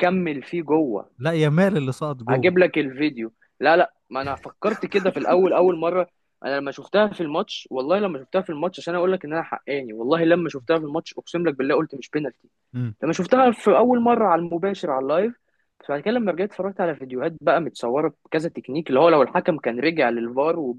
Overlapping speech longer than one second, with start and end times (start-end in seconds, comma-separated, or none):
none